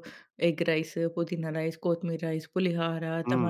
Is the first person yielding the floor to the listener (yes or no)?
yes